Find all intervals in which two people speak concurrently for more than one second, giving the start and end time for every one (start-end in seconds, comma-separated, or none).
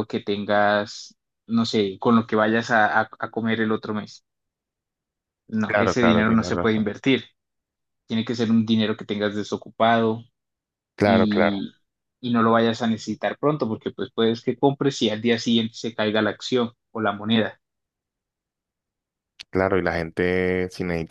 5.7-6.9